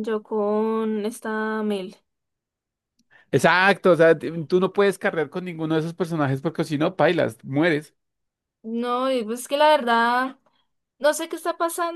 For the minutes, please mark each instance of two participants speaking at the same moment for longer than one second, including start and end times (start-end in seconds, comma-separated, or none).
none